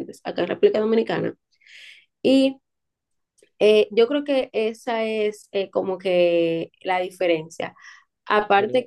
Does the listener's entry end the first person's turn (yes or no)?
no